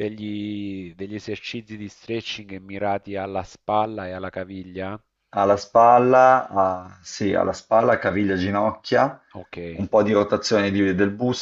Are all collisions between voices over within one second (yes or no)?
yes